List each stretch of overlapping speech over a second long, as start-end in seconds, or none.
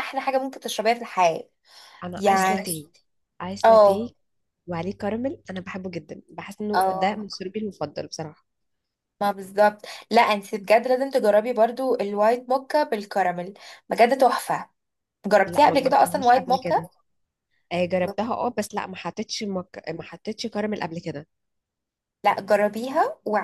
15.4-16.8